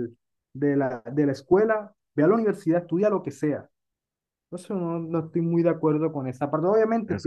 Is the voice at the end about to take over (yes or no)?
no